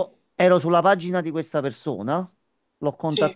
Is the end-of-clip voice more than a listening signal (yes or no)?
no